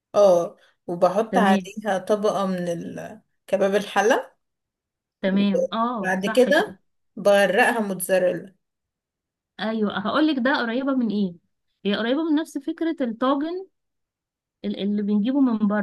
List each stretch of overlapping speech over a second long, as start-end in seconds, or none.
5.3-6.8